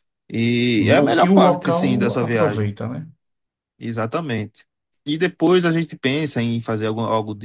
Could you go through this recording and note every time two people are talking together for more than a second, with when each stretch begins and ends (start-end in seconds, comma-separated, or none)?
0.6-2.8